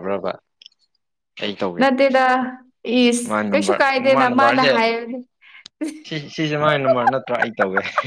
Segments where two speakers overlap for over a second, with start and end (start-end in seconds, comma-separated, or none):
3.2-4.8